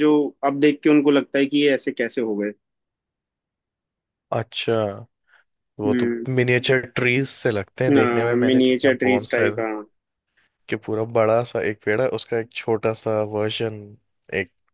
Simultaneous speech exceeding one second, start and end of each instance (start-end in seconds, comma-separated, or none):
7.9-9.5